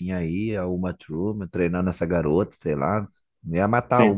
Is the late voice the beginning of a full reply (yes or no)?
yes